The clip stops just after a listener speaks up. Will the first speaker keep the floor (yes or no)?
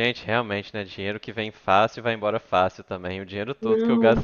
yes